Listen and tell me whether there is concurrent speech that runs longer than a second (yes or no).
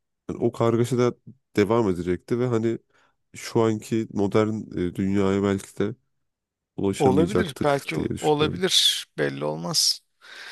yes